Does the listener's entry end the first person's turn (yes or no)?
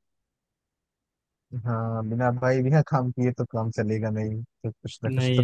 yes